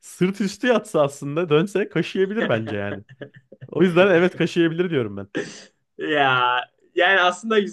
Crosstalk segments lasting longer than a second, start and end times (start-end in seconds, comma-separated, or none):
none